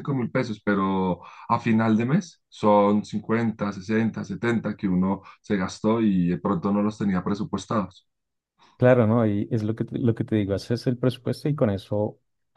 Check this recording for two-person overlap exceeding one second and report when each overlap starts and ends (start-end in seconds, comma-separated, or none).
none